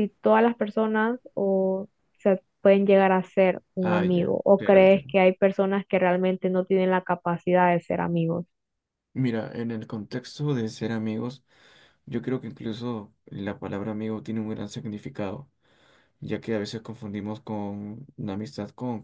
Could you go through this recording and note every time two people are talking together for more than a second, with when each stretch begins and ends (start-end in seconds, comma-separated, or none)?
3.8-5.1